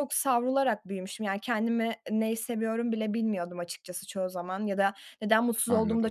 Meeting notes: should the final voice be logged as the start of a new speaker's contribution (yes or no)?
no